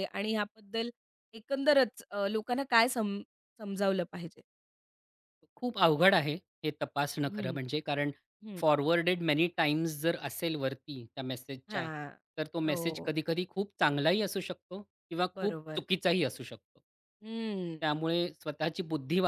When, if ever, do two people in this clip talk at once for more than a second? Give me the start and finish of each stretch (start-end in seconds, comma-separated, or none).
none